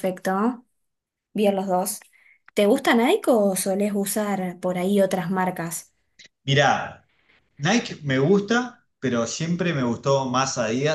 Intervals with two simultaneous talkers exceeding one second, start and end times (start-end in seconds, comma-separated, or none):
none